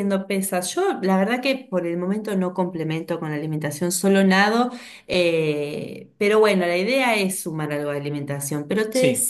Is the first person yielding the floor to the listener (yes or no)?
no